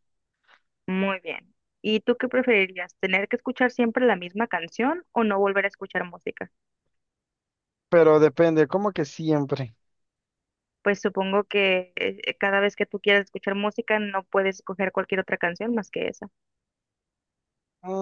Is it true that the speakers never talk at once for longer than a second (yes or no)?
yes